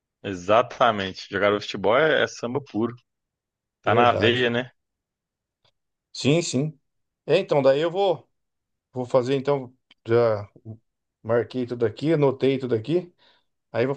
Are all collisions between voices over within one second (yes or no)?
yes